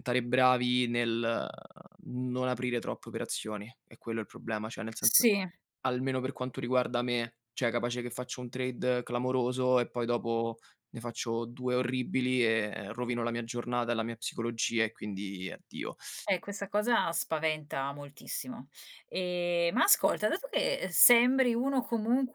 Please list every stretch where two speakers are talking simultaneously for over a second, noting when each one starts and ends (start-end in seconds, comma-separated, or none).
none